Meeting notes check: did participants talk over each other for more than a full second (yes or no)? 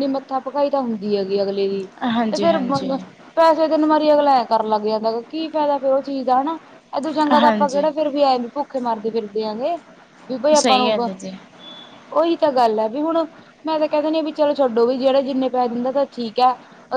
no